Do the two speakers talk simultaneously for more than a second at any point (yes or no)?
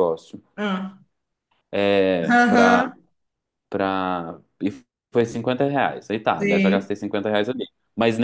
no